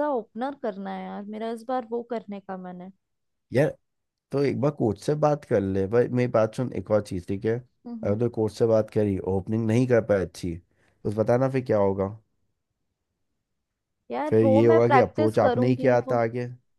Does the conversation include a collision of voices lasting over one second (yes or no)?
yes